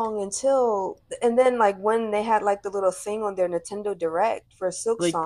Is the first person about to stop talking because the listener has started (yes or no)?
yes